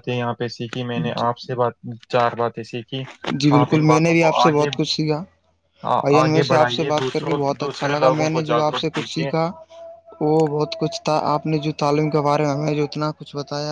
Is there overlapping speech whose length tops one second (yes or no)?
yes